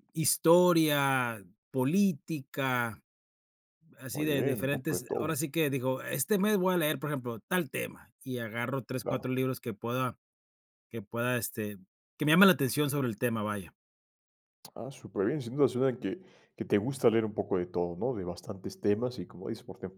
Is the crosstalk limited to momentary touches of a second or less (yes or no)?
no